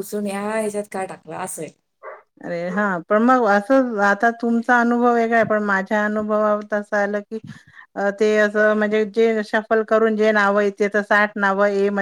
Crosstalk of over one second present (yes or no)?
no